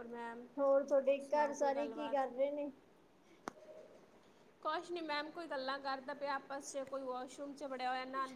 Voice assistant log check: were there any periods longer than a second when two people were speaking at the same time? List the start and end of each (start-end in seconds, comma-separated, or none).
none